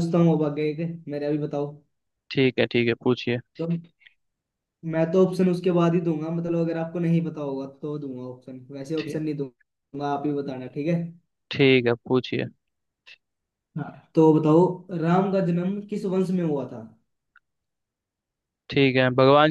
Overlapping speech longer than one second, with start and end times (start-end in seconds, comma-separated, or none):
none